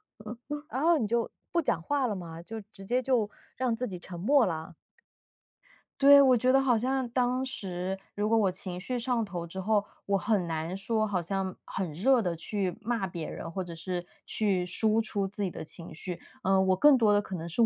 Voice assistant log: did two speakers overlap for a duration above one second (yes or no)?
no